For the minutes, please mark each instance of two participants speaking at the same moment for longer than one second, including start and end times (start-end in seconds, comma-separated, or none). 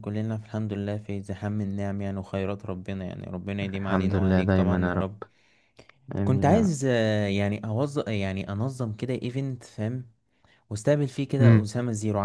3.6-5.1